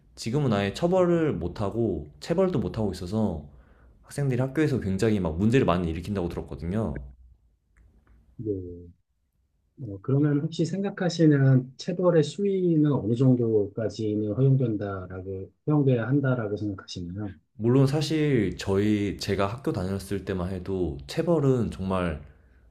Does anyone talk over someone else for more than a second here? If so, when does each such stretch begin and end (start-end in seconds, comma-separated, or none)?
none